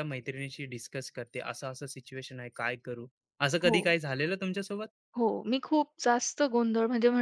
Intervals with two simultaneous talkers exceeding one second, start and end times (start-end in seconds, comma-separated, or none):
none